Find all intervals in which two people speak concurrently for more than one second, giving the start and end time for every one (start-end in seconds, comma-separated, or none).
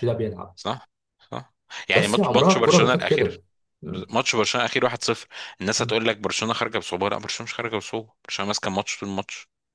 1.9-3.4